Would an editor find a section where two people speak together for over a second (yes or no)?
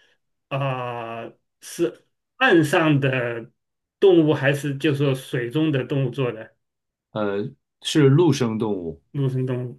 no